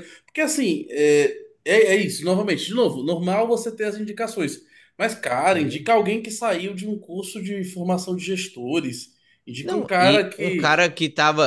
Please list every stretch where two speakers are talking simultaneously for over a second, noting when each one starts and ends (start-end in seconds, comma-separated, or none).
9.6-10.9